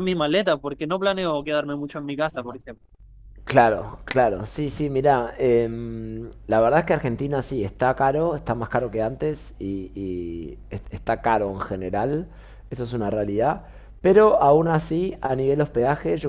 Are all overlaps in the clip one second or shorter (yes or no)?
yes